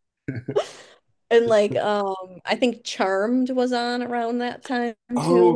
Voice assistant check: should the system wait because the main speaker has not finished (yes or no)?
no